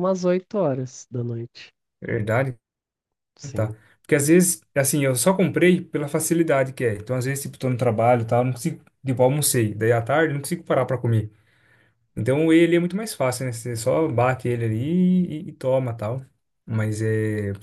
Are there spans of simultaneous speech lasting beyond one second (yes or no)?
no